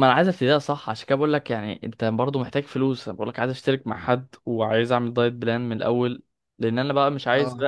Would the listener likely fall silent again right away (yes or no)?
yes